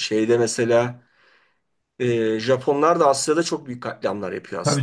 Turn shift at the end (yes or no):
yes